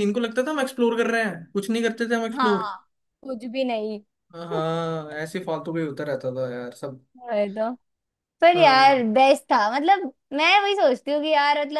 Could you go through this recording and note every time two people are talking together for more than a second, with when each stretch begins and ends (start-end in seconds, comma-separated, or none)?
none